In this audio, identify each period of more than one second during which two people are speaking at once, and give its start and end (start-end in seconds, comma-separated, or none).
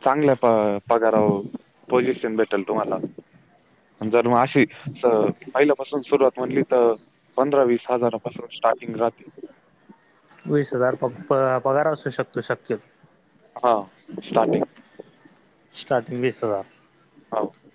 none